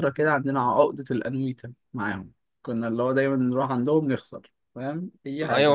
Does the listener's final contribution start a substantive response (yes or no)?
yes